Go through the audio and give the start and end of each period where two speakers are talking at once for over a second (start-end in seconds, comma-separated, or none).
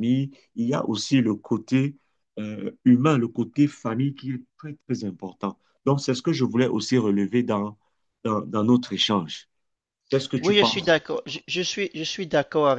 none